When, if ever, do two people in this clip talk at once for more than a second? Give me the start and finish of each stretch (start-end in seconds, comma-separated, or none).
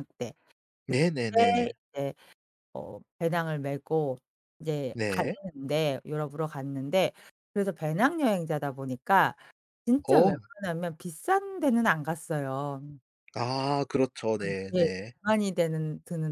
none